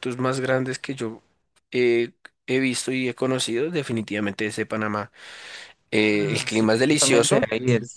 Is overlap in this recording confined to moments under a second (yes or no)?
no